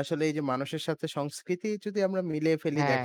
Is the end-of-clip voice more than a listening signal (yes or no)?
no